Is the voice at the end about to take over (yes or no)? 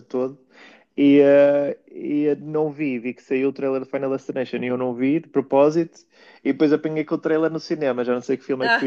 no